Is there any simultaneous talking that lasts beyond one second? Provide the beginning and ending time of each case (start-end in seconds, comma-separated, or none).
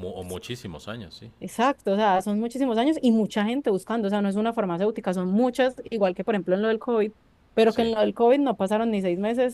none